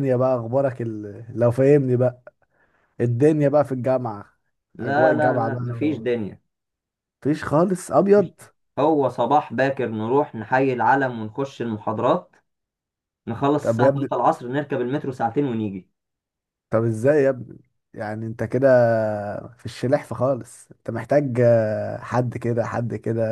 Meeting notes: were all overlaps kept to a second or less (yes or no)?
no